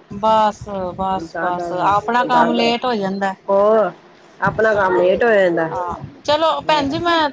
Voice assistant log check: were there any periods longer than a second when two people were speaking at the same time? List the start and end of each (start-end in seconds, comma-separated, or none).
1.2-2.7